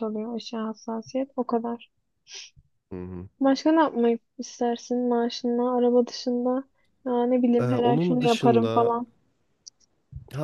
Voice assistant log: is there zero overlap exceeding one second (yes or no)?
no